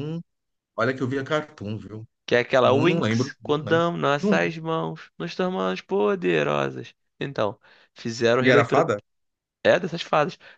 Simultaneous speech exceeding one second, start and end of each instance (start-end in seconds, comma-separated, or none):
2.6-4.4